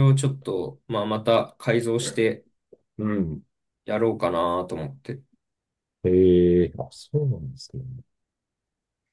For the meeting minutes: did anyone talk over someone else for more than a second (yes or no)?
no